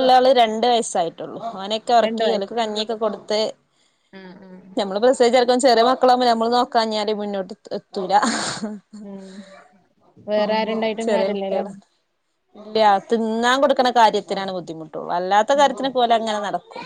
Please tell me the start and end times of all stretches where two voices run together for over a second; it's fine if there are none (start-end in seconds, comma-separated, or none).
none